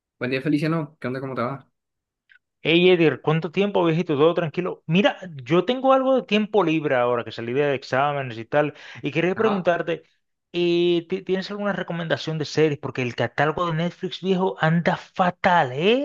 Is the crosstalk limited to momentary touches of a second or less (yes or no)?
yes